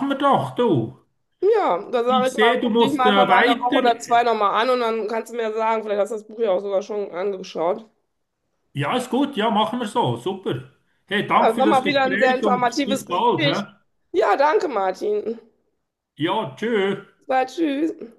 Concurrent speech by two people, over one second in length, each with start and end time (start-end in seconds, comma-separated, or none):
2.1-3.9, 11.3-13.6